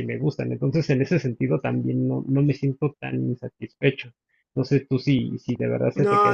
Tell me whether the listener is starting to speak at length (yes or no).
yes